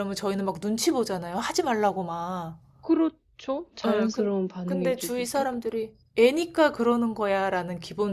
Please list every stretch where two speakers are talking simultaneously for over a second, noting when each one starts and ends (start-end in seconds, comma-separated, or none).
3.9-5.5